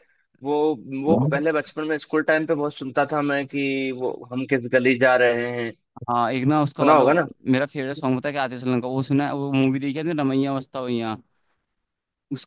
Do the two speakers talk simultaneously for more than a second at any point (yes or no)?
no